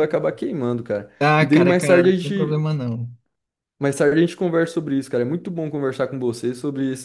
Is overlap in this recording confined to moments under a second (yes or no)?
no